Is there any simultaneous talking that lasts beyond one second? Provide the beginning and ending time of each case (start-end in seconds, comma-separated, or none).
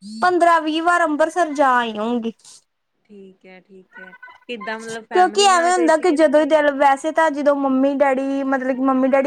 5.1-6.6